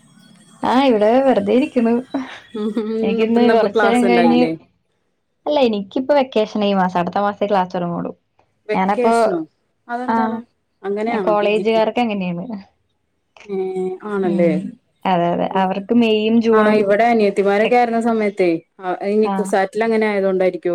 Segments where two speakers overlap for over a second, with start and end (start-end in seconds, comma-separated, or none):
3.0-4.4